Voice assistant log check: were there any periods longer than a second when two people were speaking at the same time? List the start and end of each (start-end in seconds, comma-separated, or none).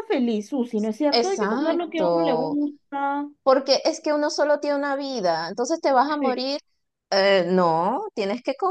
1.1-2.6